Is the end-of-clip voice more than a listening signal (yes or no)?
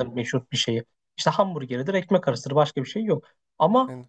no